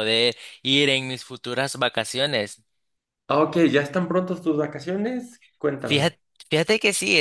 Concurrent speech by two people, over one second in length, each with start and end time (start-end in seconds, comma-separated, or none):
none